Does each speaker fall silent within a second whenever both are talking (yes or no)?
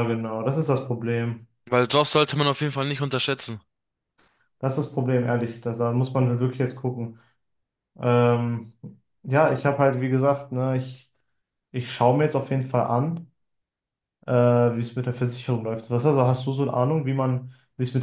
yes